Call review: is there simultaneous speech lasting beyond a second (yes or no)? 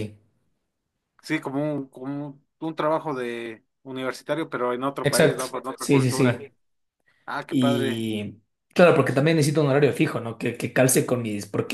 yes